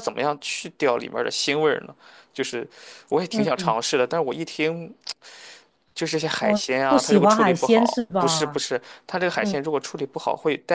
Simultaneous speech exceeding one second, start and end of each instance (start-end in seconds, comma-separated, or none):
6.4-8.6